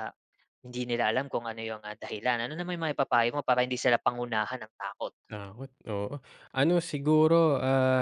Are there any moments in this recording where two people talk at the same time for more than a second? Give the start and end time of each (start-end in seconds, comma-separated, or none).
none